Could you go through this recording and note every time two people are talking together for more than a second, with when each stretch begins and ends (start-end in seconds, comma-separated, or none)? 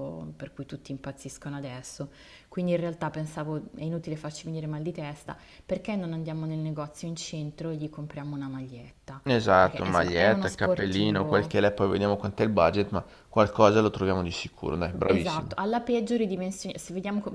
9.6-11.6